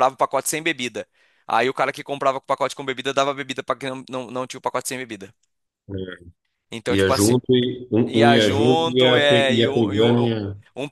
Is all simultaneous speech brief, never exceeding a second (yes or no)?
no